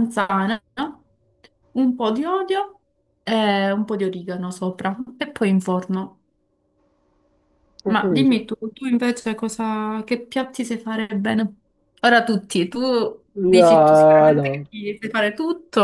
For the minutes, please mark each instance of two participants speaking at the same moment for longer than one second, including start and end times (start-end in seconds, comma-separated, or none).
13.4-14.6